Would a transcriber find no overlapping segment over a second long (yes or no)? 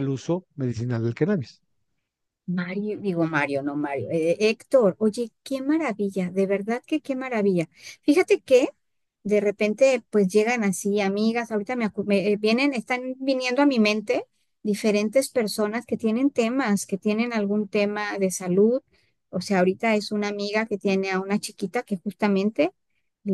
yes